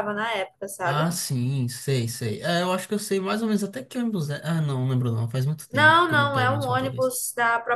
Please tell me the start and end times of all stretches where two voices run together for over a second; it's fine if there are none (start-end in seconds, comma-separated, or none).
5.7-7.1